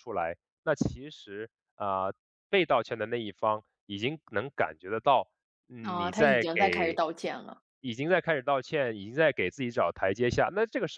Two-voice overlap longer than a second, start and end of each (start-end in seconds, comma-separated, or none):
5.8-7.0